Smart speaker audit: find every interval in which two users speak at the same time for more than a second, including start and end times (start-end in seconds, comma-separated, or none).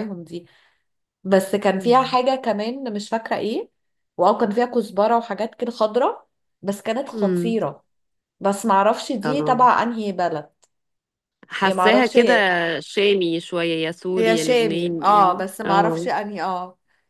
14.2-16.1